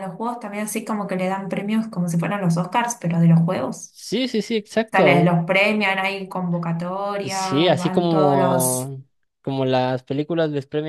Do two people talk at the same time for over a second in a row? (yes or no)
yes